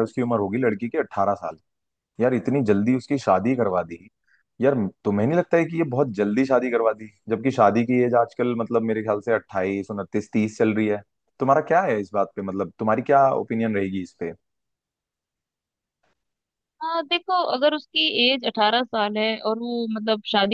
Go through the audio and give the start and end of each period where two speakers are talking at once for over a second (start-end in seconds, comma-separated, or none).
none